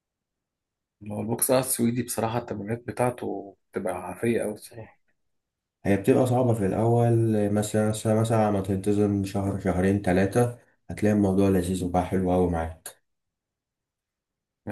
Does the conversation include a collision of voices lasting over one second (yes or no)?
no